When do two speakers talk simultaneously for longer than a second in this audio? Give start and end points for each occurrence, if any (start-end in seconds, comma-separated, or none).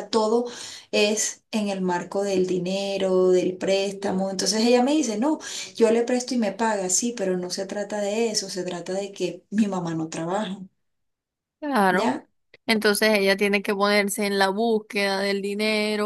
none